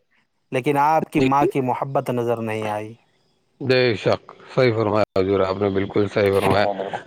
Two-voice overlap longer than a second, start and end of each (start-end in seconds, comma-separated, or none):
none